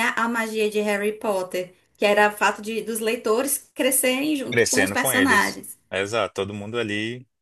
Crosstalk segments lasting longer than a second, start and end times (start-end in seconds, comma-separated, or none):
4.5-5.8